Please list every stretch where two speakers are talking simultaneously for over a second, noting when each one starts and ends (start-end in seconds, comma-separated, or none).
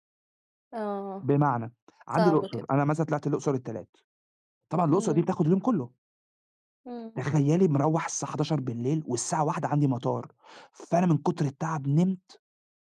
none